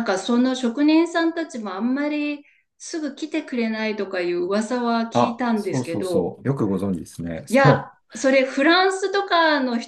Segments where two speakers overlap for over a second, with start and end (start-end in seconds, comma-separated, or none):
5.1-6.4